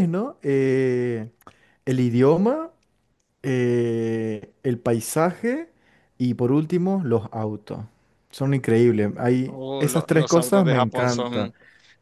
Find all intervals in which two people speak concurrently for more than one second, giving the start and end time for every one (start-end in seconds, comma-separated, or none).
9.5-11.5